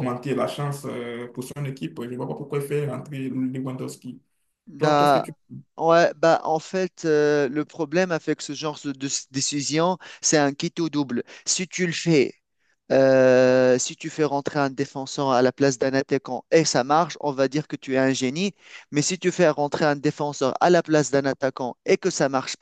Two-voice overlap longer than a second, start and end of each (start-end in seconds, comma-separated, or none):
none